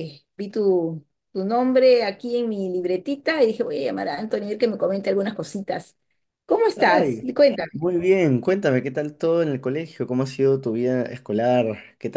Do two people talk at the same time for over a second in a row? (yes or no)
no